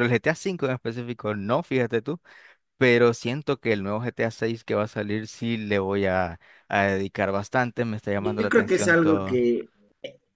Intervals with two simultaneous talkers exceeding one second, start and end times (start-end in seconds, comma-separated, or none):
8.2-9.4